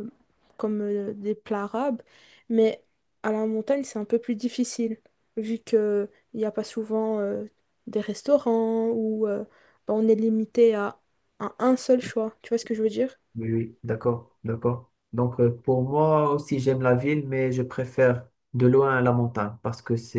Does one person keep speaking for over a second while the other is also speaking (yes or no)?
no